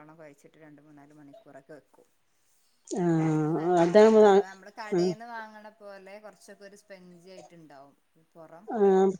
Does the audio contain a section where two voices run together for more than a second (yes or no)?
yes